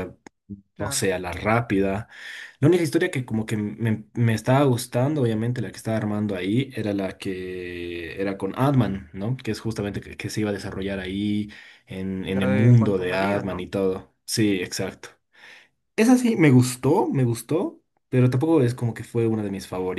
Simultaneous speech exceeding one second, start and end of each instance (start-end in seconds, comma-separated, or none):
12.4-13.6